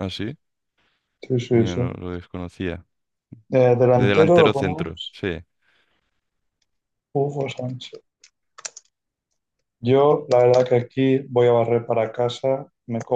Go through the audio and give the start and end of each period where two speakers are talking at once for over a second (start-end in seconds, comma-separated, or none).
3.9-5.2